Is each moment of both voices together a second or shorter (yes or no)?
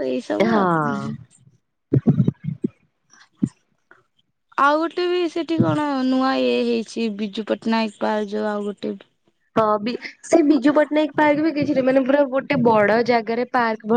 yes